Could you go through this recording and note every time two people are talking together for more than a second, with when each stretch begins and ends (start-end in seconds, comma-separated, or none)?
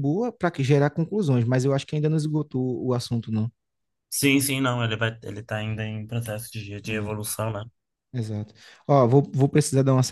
none